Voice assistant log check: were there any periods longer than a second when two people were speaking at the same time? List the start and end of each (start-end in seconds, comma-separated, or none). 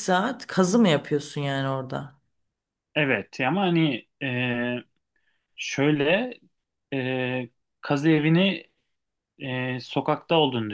none